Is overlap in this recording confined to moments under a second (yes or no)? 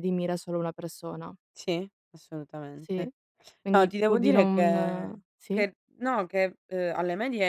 no